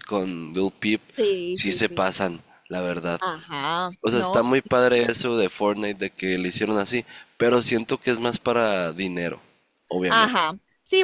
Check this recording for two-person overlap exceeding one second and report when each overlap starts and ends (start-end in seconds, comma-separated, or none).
none